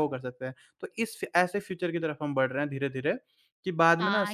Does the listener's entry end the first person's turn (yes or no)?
yes